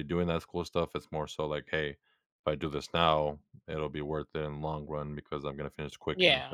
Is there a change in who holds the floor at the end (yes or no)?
yes